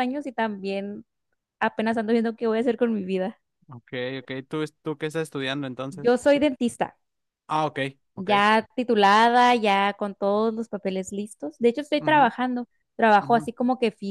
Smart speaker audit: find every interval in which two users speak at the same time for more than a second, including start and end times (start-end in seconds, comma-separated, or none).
none